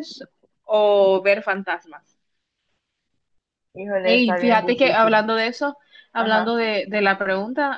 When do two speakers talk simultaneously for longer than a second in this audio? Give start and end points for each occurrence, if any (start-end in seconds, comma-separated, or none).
4.0-5.2